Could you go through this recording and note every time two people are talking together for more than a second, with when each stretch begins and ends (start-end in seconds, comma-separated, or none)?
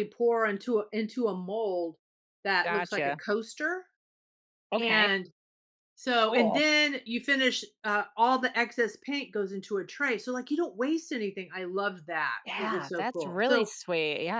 12.4-13.7